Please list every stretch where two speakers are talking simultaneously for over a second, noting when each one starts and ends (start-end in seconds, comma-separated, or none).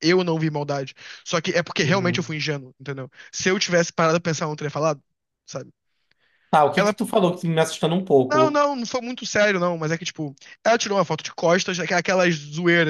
none